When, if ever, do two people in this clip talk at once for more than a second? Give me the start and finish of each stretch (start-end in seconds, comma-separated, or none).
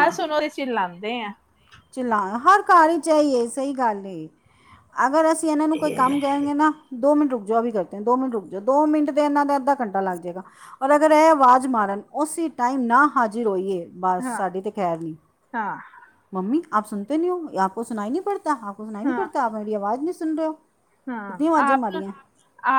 none